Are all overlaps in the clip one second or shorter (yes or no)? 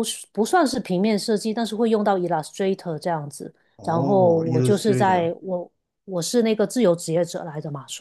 no